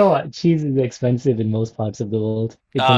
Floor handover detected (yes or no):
yes